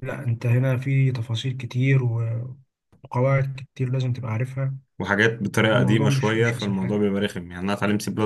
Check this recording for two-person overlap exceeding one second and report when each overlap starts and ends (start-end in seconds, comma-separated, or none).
5.7-7.2